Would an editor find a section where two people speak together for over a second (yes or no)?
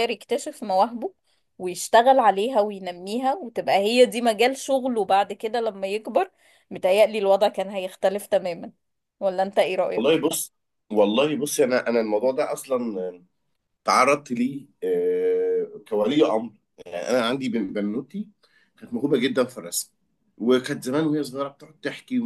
no